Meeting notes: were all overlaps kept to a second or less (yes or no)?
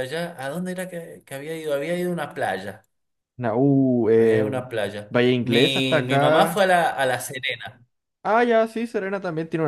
no